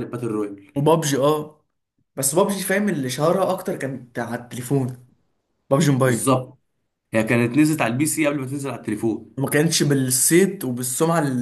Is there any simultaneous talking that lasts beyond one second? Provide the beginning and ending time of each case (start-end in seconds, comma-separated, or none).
none